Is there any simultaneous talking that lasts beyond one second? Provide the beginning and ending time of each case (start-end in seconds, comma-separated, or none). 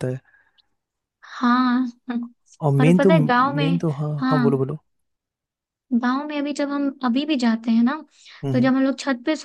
2.8-4.6